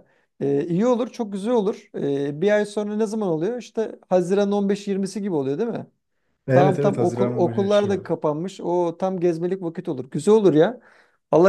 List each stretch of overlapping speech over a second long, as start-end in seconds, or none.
6.5-8.2